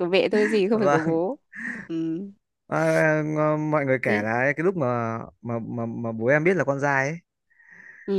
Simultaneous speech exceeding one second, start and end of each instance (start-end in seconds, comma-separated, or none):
none